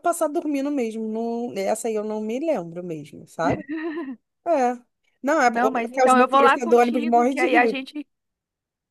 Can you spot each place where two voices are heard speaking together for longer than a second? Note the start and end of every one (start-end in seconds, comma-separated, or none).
5.5-7.8